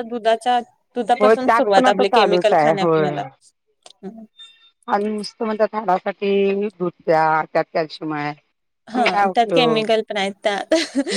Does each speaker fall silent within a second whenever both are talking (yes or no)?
no